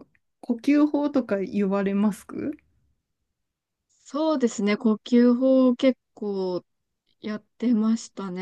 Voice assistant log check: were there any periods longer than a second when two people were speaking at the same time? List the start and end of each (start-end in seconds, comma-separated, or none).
none